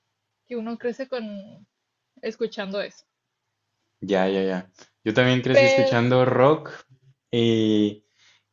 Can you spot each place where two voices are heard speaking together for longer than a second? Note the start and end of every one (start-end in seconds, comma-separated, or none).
none